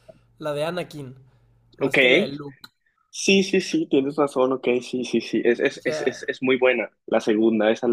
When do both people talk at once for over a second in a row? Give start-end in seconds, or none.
none